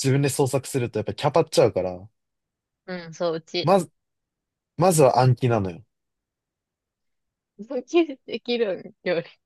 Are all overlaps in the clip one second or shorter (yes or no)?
yes